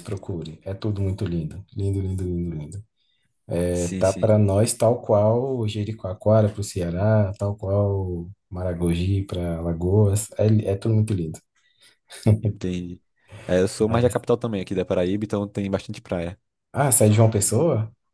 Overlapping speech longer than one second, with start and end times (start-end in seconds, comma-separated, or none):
none